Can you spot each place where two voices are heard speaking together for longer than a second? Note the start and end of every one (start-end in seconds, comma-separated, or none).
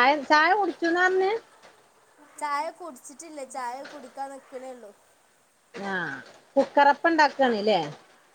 none